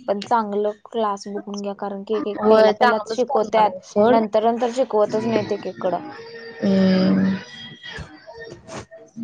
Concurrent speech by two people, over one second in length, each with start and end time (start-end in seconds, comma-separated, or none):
2.5-4.2